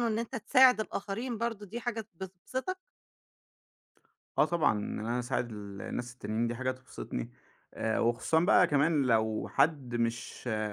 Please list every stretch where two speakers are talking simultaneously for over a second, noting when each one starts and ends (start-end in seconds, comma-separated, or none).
none